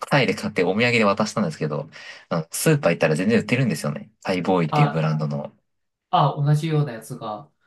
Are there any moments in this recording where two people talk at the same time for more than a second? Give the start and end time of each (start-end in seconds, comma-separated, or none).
none